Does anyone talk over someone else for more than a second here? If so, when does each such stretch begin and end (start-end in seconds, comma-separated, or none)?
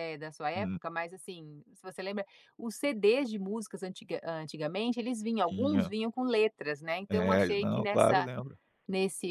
7.1-8.3